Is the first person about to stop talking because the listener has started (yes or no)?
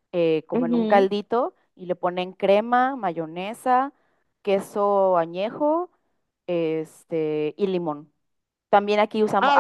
yes